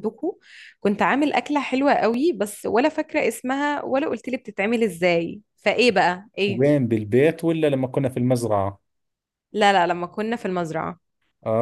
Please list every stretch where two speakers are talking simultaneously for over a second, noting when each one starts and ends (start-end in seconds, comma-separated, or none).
none